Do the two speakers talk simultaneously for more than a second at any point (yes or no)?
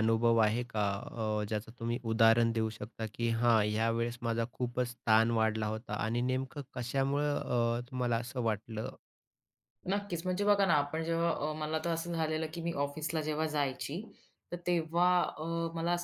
no